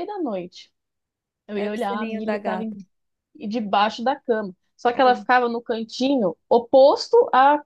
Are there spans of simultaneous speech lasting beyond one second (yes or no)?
yes